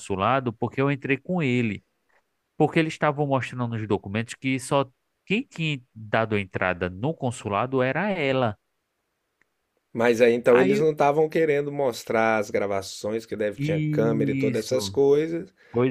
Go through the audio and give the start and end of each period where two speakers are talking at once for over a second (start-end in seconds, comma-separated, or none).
13.6-15.0